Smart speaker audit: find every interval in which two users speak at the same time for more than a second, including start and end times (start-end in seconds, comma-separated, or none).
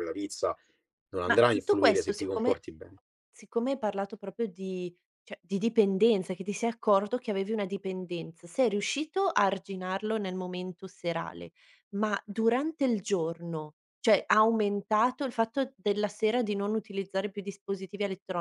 1.3-2.6